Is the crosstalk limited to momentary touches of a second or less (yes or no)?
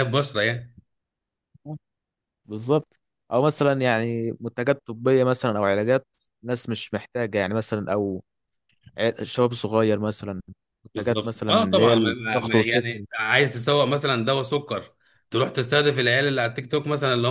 no